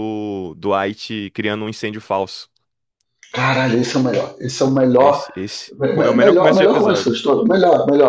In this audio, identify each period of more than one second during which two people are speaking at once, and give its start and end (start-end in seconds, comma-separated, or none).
5.8-7.2